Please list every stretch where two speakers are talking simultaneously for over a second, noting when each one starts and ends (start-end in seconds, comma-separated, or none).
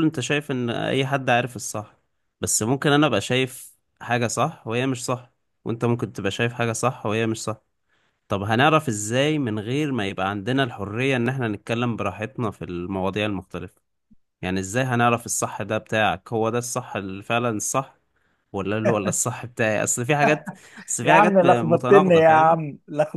21.0-22.6